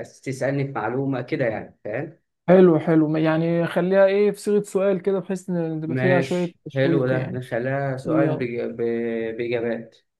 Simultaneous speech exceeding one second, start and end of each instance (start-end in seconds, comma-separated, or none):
5.9-7.4